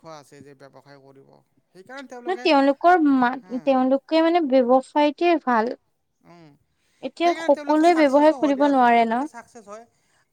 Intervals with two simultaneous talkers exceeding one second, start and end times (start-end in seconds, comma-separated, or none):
7.2-9.1